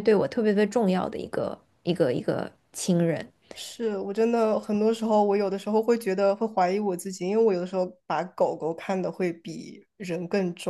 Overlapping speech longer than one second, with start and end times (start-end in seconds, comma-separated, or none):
none